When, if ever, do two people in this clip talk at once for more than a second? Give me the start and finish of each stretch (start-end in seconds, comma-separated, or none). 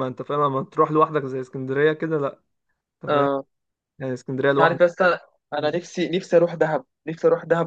none